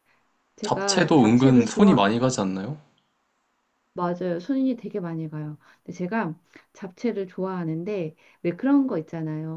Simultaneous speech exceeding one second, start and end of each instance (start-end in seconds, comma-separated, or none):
0.6-2.0